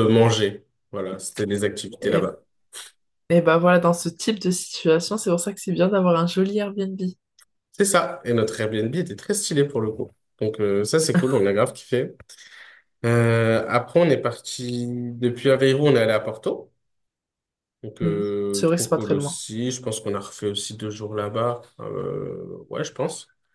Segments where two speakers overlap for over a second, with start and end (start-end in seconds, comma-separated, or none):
18.0-19.4